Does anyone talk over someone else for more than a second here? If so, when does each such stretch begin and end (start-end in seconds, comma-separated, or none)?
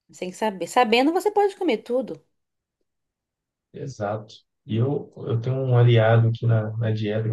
none